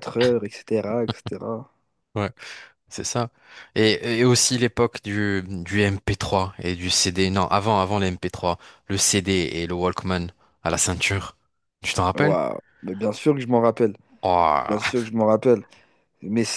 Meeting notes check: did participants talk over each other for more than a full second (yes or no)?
no